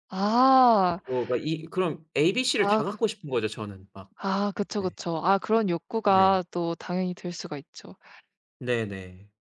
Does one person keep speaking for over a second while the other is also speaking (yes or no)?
no